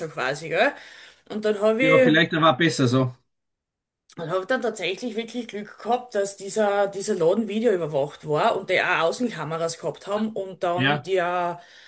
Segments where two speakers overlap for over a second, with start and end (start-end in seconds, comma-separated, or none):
none